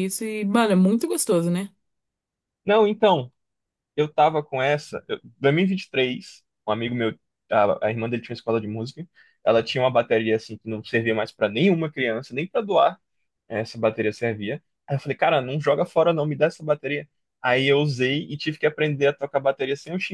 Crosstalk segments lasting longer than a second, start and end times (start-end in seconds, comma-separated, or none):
none